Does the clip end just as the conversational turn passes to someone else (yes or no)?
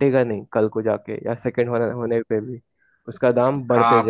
yes